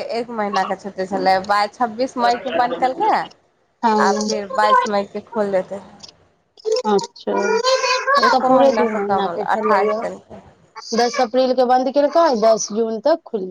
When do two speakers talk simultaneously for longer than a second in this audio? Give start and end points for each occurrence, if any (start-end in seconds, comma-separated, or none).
8.2-10.0